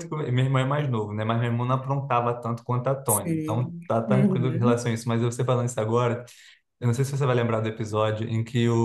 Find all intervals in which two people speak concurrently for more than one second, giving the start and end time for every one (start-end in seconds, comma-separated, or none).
3.1-4.8